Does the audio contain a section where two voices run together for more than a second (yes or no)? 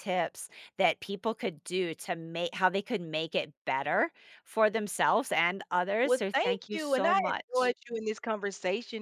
yes